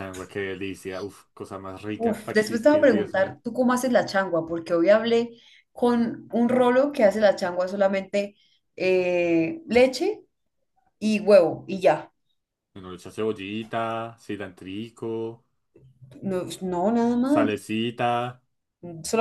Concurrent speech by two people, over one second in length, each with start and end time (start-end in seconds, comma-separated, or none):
2.0-3.4